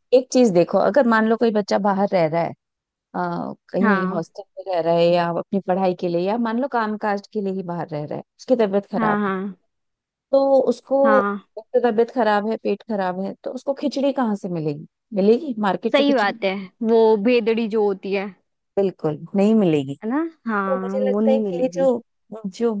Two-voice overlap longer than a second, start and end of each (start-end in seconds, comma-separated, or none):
20.5-21.9